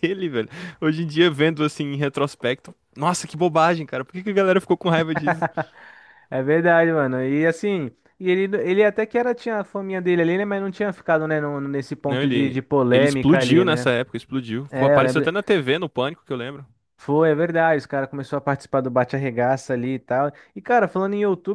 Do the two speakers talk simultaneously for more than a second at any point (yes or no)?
yes